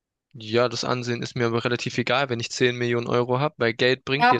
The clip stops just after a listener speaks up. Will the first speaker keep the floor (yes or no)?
no